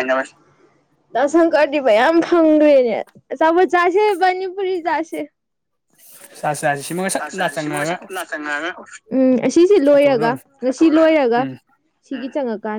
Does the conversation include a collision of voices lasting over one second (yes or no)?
no